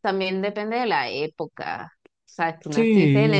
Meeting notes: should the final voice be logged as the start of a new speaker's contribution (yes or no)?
no